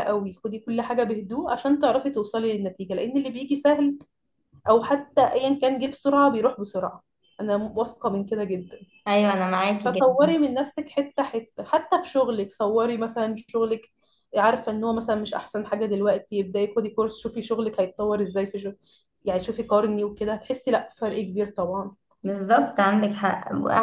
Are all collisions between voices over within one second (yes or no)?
yes